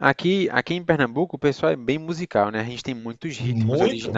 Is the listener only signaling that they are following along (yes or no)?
yes